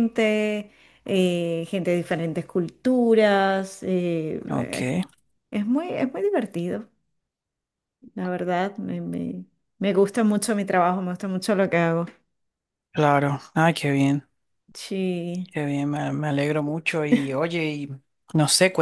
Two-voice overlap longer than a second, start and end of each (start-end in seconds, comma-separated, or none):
none